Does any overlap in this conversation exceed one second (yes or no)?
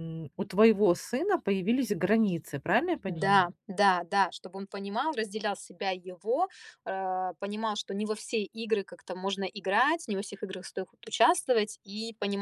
no